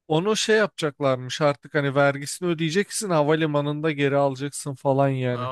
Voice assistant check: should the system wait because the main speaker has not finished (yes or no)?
no